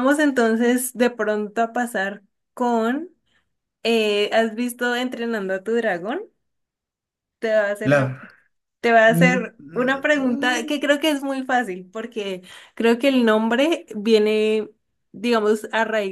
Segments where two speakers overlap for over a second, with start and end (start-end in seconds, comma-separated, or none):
9.1-10.8